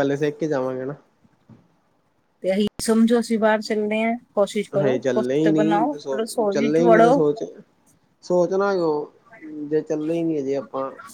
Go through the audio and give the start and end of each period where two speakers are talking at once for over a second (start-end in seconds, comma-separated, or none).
4.8-7.2